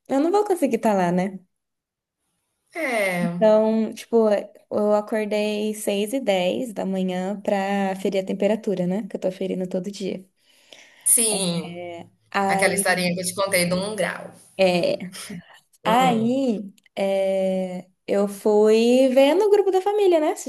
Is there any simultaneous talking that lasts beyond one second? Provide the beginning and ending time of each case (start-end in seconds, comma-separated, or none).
none